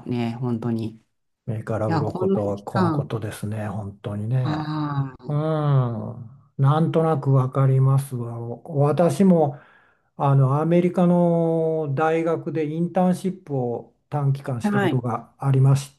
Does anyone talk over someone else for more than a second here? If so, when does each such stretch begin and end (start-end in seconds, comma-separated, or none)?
1.9-3.1